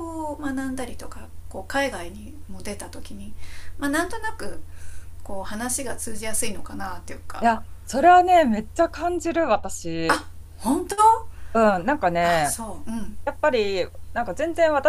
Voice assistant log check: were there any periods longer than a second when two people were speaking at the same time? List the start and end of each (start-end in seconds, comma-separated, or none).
none